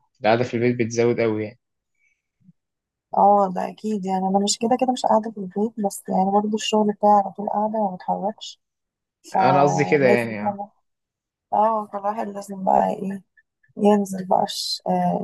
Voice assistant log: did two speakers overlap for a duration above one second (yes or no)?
yes